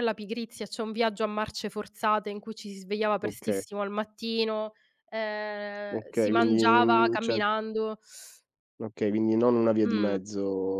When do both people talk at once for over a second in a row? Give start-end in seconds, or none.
5.9-7.4